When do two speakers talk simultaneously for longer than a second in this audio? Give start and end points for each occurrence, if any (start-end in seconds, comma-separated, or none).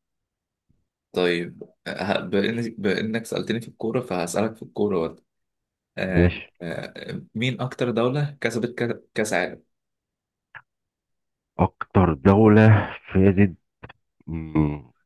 none